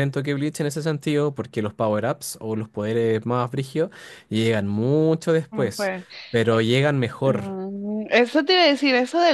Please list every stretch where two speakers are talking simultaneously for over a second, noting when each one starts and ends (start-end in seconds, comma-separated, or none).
none